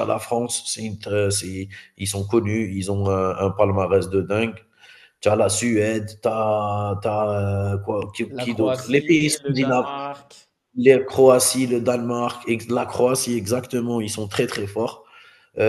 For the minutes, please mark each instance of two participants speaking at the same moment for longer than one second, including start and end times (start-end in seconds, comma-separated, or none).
8.3-9.9